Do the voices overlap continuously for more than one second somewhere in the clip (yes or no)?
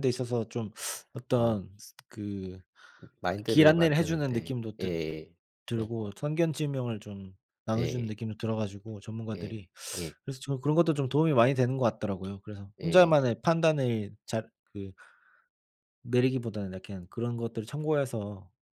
yes